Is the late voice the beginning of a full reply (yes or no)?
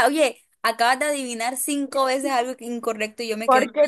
yes